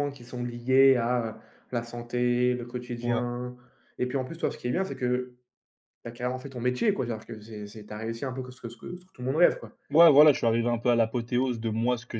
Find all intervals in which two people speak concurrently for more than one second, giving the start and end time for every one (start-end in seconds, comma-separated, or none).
none